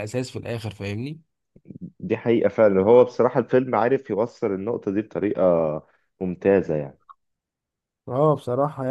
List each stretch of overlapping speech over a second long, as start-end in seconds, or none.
none